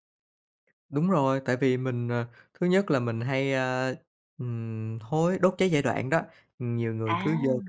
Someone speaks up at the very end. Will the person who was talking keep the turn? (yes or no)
yes